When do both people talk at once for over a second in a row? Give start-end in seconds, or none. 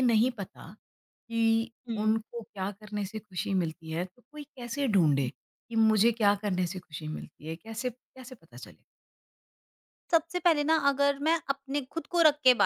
none